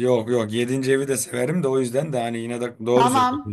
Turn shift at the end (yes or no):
yes